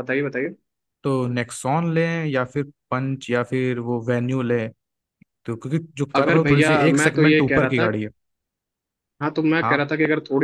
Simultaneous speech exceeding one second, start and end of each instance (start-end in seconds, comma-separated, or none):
6.2-7.9